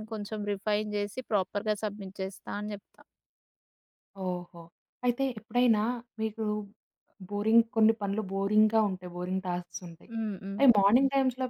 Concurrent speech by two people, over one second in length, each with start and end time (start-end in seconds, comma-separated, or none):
none